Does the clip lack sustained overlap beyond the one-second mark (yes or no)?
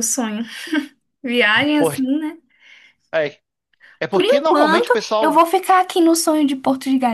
no